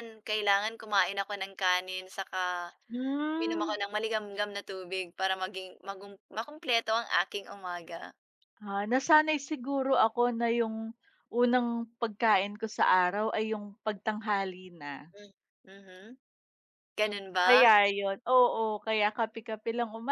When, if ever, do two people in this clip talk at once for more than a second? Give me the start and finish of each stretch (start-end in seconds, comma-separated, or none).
none